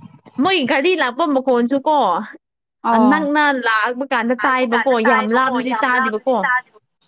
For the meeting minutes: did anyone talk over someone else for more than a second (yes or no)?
yes